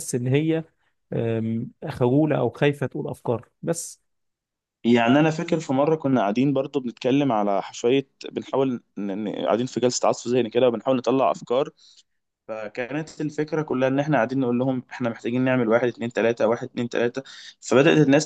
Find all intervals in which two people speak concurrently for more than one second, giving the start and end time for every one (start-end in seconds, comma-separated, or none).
none